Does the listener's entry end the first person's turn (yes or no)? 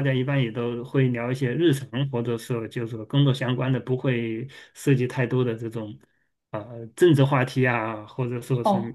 yes